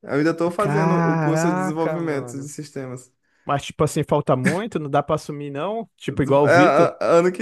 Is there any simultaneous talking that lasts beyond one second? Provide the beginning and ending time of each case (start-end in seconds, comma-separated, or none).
0.6-2.5